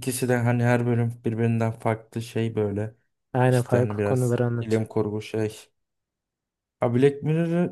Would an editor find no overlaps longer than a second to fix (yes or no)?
no